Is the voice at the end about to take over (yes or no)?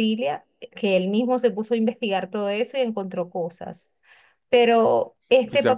yes